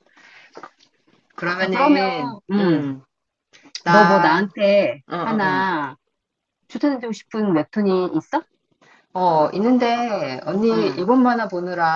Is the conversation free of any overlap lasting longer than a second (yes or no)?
no